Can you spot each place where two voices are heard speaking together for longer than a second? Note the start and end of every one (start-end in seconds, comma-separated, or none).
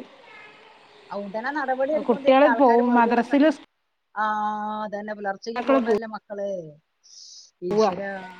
2.1-3.5